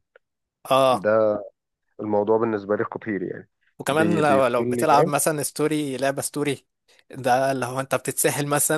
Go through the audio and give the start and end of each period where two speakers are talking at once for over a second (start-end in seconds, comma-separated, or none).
3.9-5.1